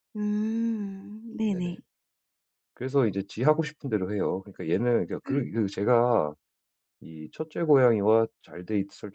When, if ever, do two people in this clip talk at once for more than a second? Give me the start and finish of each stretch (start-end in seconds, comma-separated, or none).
none